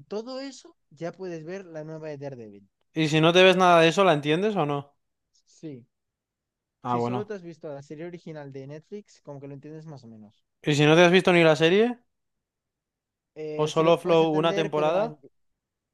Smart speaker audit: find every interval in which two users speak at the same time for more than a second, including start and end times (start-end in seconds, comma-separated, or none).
13.6-15.0